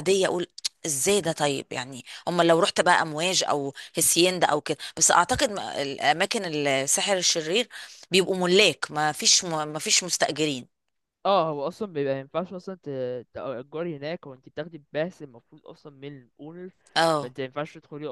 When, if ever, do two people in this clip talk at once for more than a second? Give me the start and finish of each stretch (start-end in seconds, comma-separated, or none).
none